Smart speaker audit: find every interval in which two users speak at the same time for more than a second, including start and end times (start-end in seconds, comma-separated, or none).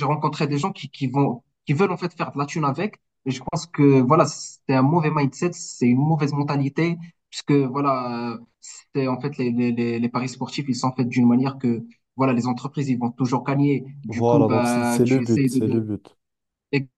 14.1-15.8